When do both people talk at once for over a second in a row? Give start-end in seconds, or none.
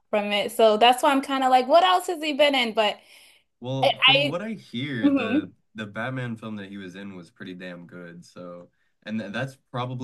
none